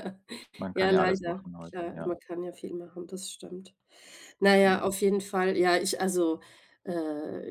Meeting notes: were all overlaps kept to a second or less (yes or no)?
no